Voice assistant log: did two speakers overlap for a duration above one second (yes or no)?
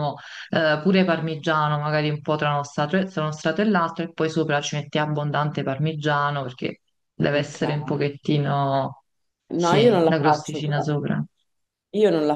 yes